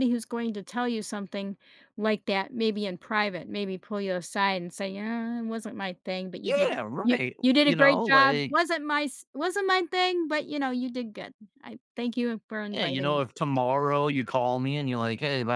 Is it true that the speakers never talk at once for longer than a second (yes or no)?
no